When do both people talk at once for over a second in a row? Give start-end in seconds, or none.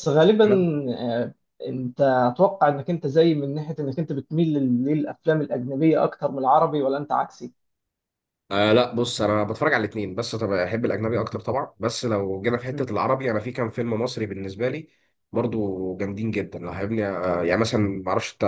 none